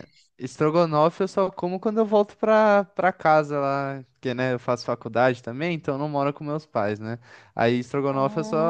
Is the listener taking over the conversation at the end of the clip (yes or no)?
no